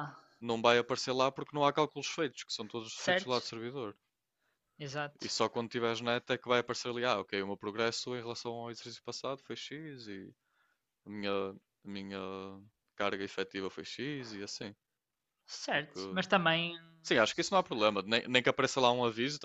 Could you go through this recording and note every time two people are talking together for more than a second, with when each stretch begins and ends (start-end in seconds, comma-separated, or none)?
none